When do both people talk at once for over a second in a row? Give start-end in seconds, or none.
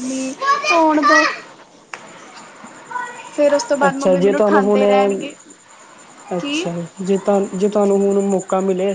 3.9-5.3